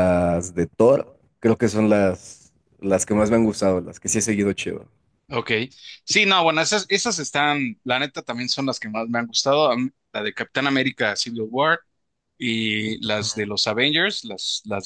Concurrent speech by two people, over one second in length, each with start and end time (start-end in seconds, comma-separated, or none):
none